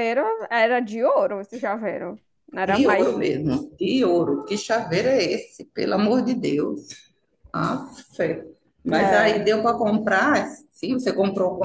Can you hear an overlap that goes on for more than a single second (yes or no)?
no